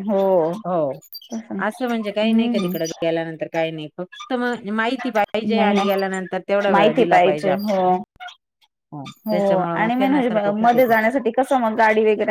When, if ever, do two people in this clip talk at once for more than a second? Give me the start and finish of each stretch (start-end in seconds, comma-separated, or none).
none